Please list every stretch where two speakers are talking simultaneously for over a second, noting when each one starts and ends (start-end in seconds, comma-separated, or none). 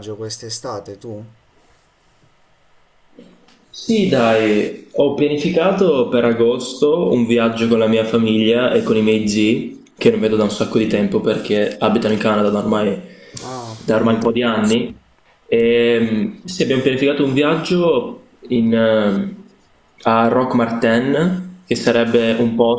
none